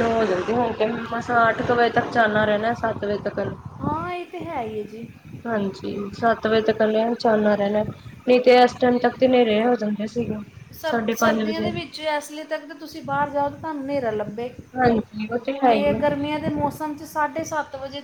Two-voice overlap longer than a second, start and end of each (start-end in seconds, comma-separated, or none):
none